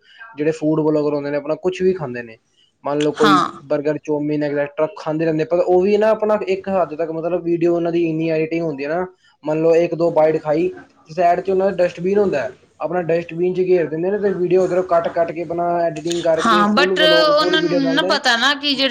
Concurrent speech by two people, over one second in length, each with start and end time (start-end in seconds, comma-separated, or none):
16.4-18.0